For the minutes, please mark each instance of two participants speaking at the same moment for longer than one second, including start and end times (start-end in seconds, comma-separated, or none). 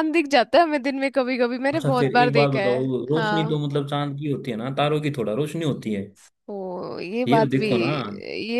1.7-3.6